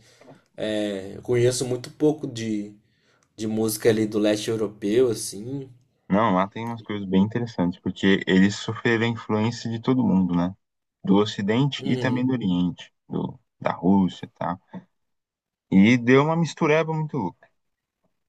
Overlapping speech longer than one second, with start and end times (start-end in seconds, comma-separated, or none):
none